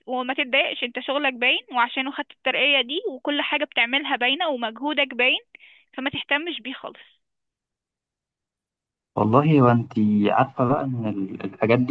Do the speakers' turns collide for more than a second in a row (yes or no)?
no